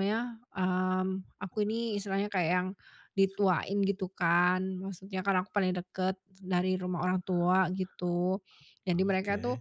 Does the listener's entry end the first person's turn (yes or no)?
no